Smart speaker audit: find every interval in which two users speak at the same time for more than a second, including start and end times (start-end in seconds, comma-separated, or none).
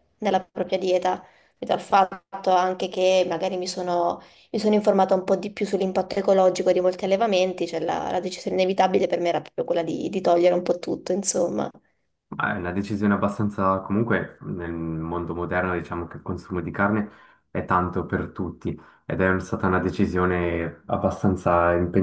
none